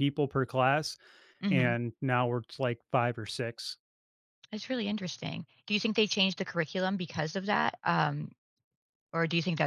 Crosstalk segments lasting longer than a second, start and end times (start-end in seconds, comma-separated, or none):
none